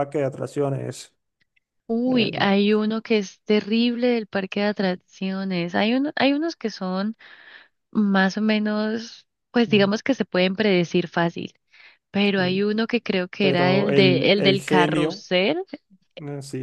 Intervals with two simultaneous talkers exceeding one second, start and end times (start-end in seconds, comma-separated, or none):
13.4-15.2